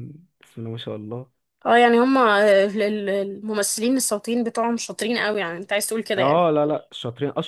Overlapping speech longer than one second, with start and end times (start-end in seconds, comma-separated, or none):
none